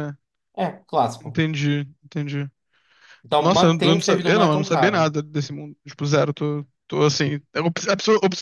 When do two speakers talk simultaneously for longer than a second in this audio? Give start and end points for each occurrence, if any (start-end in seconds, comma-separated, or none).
3.4-5.1